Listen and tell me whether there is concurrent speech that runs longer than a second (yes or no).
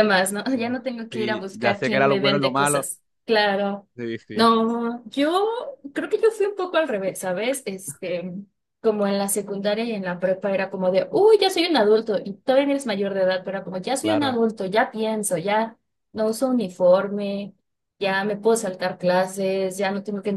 yes